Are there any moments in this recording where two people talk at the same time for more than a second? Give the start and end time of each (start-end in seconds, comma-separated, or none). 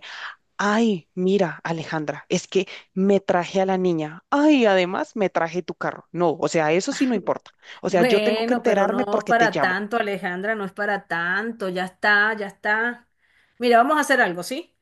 7.9-9.8